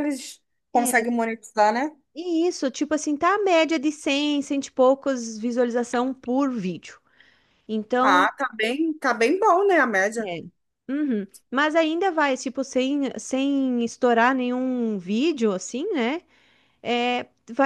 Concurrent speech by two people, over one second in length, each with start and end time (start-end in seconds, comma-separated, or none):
none